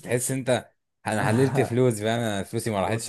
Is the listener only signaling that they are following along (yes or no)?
no